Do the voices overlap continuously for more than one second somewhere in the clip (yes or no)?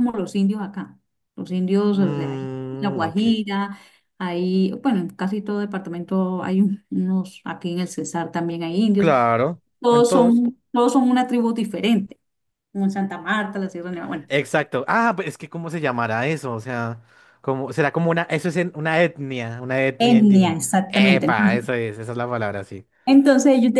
yes